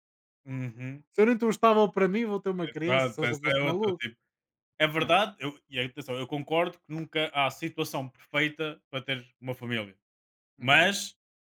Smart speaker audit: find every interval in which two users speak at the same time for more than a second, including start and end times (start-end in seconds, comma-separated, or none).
2.7-4.0